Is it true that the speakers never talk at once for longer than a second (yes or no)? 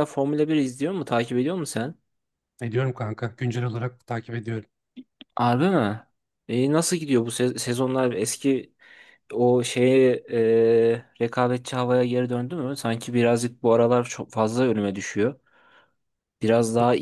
yes